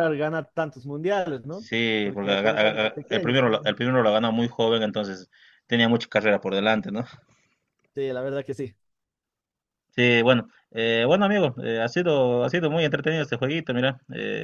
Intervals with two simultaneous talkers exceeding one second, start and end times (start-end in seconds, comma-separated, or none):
1.5-3.3